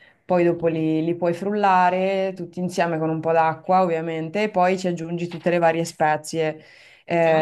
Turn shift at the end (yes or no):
no